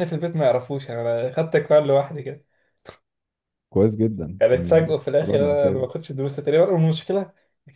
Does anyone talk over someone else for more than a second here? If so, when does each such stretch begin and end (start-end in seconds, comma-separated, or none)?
4.4-5.9